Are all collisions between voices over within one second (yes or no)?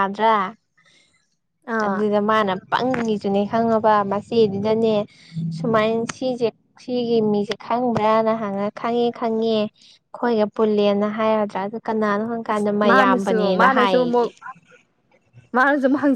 no